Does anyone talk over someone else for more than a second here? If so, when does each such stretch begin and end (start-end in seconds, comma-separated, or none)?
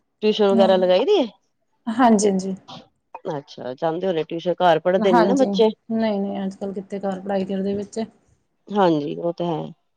none